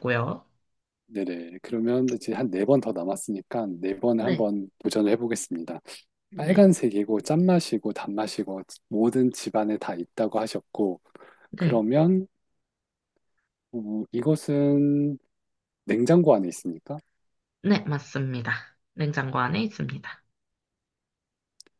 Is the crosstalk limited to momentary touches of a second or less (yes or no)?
yes